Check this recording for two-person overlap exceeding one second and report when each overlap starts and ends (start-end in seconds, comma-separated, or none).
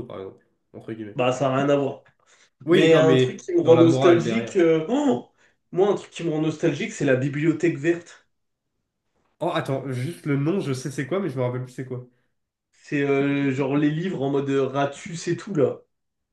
2.7-4.6